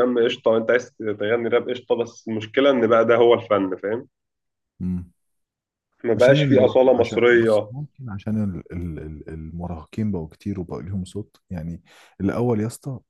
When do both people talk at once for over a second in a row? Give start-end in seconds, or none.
6.2-7.7